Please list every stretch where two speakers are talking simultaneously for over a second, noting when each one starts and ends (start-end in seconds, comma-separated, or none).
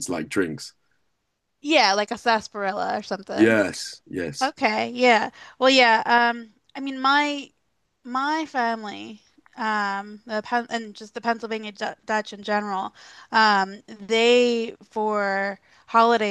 none